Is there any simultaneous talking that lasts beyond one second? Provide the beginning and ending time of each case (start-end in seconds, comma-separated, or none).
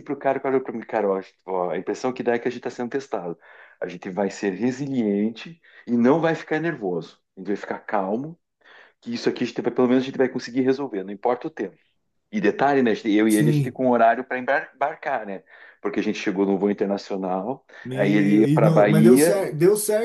17.8-19.4